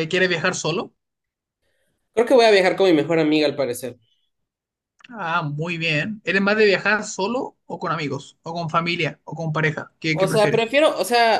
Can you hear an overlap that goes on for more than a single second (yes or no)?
no